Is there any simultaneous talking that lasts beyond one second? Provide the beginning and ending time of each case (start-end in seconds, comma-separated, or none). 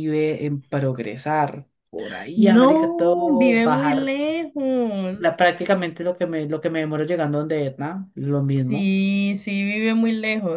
2.4-4.1